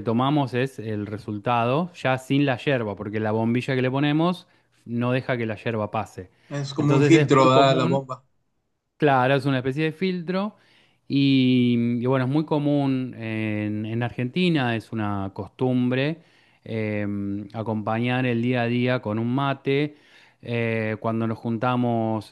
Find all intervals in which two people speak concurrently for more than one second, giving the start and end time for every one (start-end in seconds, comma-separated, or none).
6.8-8.1